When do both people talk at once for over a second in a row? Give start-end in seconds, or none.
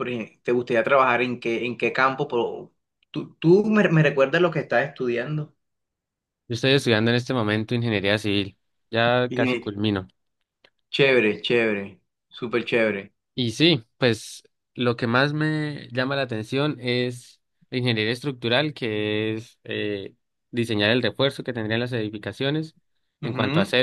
none